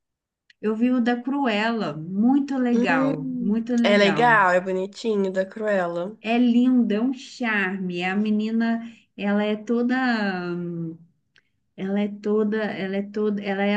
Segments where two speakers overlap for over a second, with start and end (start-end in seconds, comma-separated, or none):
2.7-4.4